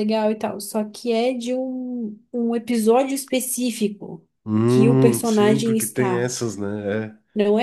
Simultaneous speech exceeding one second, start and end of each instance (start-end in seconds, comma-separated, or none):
4.7-6.3